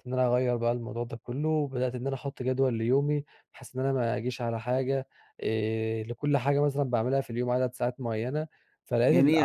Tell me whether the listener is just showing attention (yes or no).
no